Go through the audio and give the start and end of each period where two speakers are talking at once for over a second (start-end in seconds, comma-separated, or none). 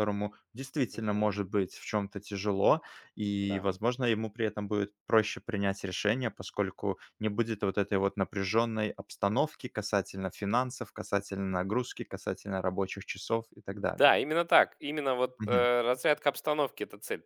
none